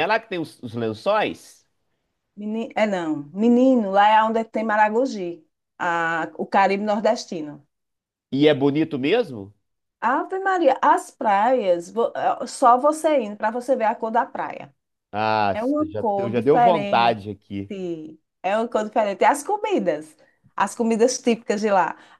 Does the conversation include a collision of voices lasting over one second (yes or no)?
yes